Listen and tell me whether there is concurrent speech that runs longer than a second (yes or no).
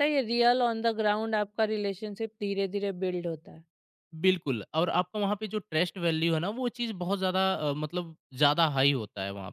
no